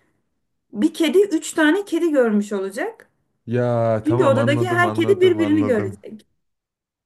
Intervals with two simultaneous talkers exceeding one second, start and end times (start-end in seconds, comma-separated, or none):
4.0-6.0